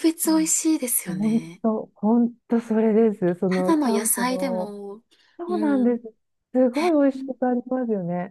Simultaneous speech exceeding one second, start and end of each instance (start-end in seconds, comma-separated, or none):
3.5-4.8